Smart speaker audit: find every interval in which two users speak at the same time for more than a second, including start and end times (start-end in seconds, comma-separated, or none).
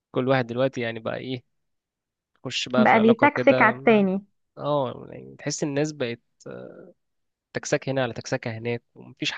2.8-4.1